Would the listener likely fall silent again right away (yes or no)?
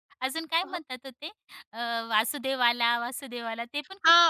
no